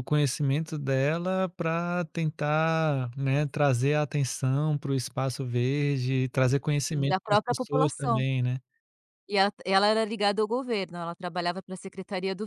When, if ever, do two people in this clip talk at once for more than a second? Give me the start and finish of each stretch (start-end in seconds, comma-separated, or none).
6.9-8.2